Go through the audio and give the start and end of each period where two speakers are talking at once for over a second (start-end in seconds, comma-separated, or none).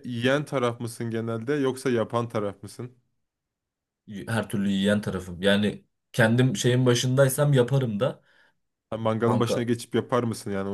none